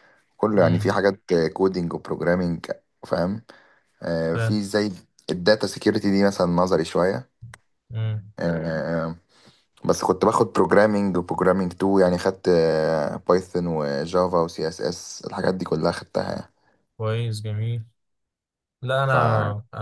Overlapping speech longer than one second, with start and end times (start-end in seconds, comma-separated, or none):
none